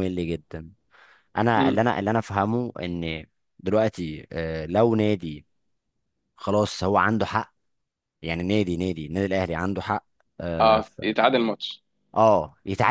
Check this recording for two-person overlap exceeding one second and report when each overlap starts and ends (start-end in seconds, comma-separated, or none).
none